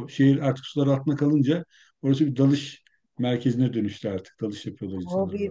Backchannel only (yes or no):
no